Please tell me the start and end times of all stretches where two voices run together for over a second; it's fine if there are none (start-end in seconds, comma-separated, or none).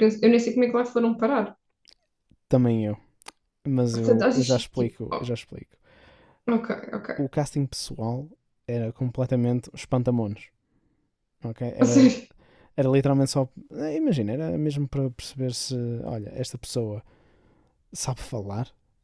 3.9-5.3